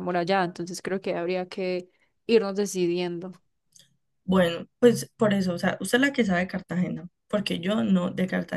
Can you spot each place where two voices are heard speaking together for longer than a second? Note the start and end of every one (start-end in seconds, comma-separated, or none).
none